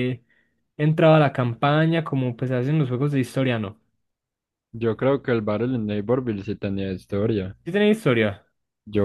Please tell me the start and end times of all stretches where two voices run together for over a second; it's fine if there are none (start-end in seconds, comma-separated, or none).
none